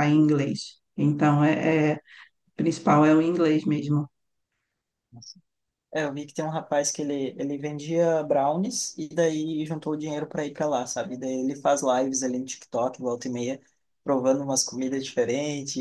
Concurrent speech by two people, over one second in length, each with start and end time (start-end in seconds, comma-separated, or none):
none